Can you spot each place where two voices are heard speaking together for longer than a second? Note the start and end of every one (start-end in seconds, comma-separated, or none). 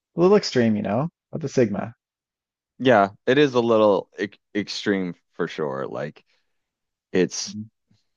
none